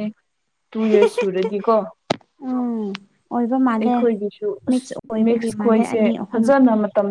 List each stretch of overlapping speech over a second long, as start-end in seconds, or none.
4.7-6.5